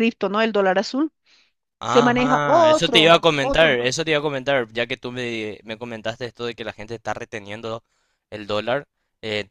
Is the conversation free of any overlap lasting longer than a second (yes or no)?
no